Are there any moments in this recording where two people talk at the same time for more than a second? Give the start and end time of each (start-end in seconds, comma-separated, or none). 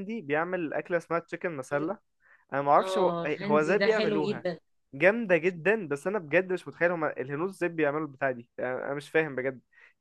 2.8-4.4